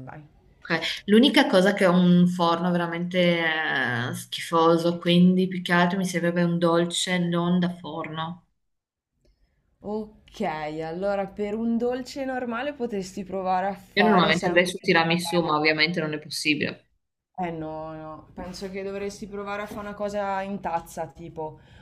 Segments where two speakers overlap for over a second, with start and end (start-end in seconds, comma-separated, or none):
13.9-15.5